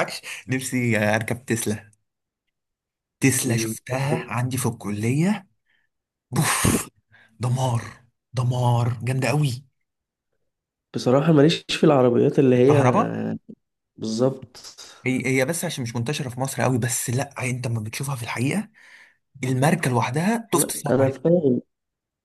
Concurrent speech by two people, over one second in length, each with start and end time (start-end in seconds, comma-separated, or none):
none